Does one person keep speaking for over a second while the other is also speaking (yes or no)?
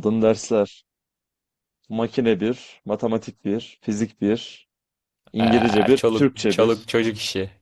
yes